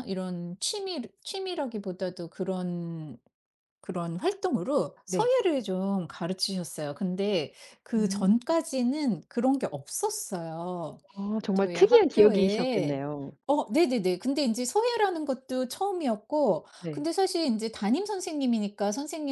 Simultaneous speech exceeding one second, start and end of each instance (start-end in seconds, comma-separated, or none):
11.5-13.0